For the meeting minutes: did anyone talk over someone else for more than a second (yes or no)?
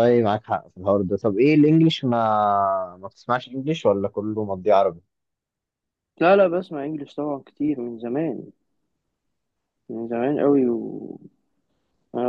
no